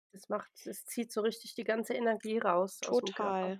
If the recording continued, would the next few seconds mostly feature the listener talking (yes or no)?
yes